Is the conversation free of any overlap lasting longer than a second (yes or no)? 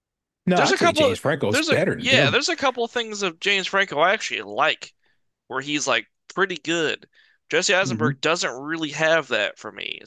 no